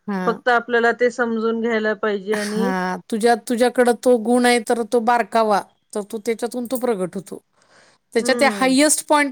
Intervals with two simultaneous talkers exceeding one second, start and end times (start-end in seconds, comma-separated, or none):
none